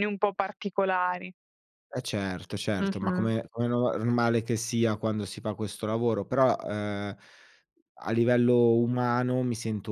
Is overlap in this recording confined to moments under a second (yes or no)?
yes